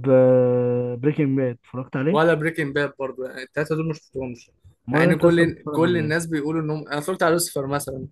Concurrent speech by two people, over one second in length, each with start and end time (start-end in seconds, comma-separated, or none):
4.9-6.3